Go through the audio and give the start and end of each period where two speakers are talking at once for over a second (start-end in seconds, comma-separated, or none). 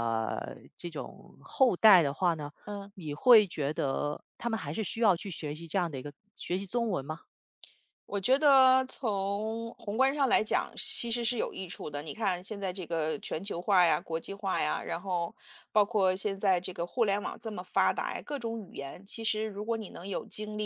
none